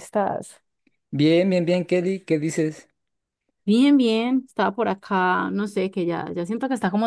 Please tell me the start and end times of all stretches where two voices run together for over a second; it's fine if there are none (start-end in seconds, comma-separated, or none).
none